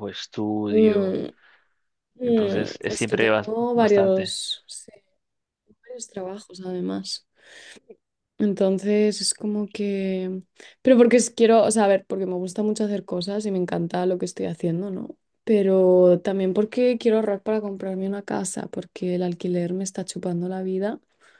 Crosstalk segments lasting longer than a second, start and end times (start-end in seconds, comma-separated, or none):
2.2-4.4